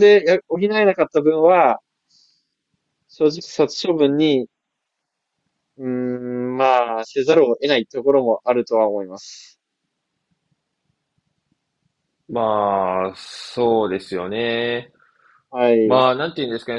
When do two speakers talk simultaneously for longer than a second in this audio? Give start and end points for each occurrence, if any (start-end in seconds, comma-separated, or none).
none